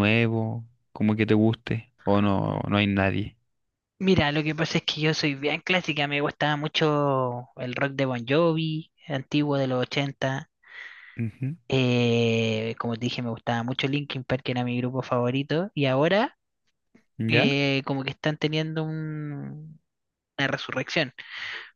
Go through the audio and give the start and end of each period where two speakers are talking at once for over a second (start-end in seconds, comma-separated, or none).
none